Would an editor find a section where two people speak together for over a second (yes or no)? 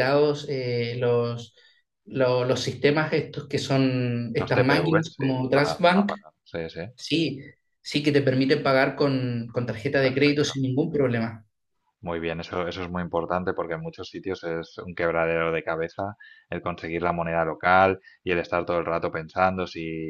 yes